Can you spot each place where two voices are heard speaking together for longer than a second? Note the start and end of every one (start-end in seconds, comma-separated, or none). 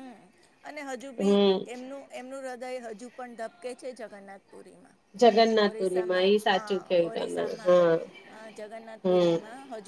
5.7-7.8